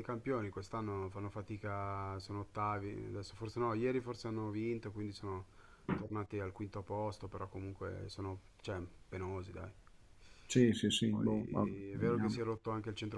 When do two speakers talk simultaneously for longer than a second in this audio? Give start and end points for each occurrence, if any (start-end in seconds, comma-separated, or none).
11.1-12.4